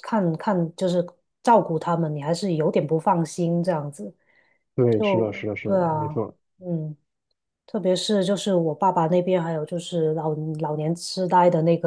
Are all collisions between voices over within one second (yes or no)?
no